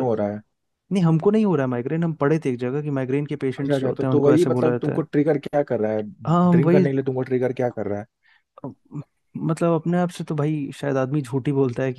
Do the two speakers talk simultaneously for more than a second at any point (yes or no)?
yes